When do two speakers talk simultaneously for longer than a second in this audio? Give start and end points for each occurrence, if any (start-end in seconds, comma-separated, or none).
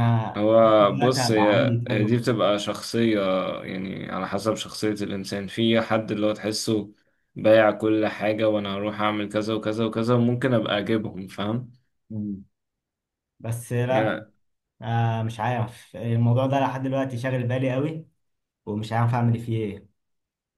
0.8-2.3